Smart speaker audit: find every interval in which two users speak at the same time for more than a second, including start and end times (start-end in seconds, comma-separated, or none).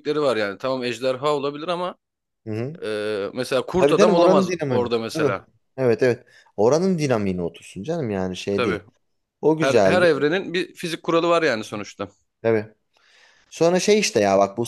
3.8-5.3